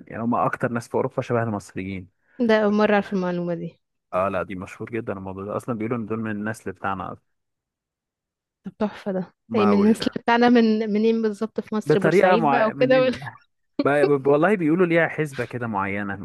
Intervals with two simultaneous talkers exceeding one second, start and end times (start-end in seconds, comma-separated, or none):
11.9-13.1